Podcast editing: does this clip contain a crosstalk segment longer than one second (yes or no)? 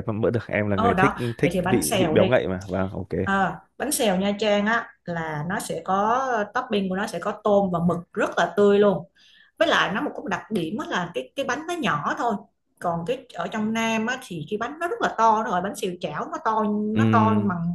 yes